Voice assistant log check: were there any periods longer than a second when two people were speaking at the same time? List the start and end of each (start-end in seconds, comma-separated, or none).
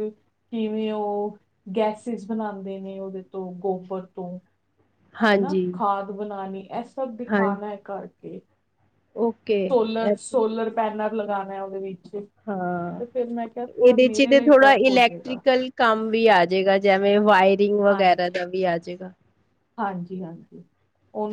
13.8-15.4